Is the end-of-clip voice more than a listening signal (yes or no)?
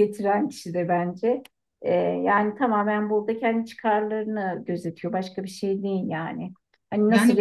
no